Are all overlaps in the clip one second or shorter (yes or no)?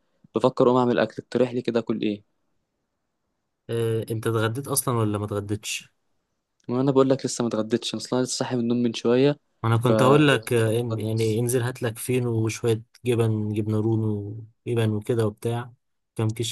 no